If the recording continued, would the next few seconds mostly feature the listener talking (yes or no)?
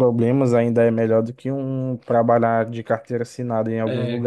yes